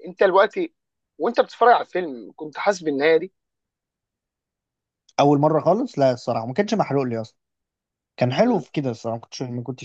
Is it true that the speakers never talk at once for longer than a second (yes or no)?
yes